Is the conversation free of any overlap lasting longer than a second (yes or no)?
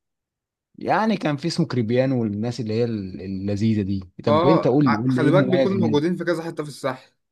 no